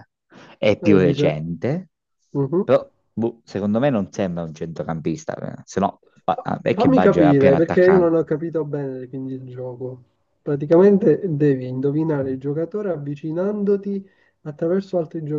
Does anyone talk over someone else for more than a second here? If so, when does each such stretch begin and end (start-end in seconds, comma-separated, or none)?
6.7-8.1